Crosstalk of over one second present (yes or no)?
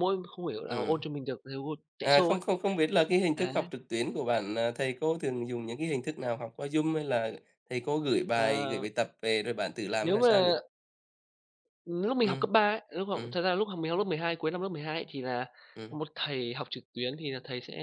no